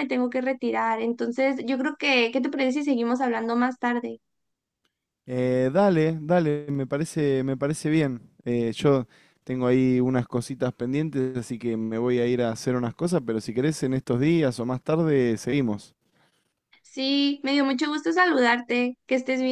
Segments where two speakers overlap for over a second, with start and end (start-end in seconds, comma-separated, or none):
none